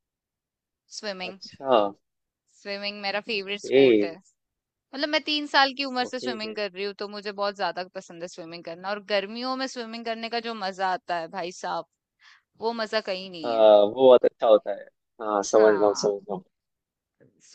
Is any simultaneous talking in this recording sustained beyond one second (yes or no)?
no